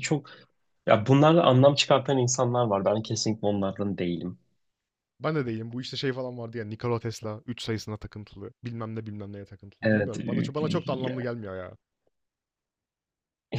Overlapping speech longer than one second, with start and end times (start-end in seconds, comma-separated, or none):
9.8-11.3